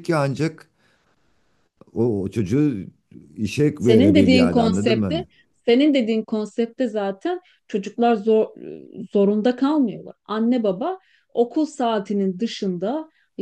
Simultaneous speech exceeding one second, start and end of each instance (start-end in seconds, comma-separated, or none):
3.8-5.2